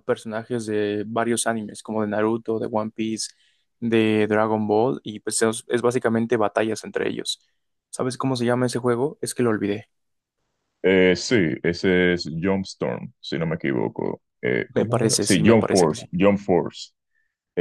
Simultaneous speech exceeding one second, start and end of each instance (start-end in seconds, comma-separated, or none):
14.7-16.0